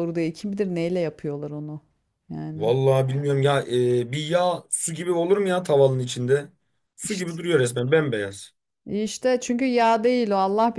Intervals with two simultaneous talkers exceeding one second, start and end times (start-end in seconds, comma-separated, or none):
none